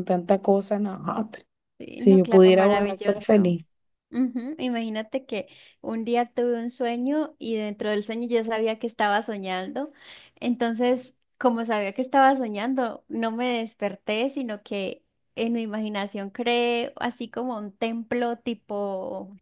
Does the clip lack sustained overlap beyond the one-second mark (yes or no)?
no